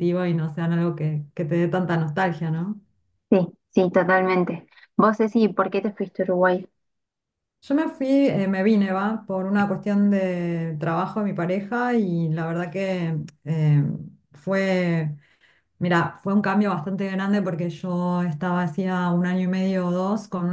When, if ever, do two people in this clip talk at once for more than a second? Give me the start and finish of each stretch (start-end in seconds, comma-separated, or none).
none